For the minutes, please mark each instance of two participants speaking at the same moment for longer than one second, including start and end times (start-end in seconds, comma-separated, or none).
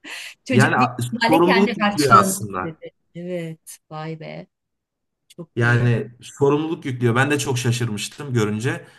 0.5-2.8